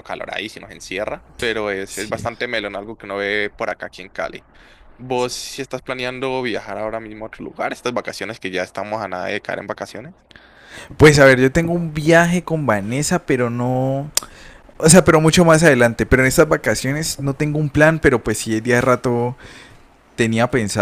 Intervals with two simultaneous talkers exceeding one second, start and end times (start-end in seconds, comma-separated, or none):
none